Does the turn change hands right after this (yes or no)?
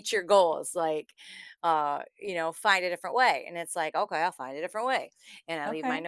no